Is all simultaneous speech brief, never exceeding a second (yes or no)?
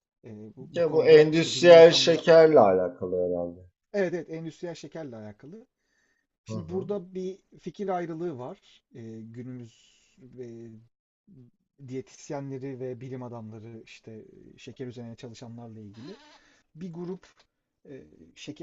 no